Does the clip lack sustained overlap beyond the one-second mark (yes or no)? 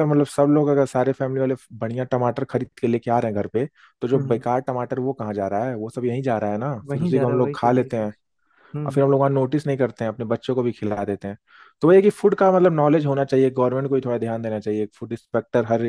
no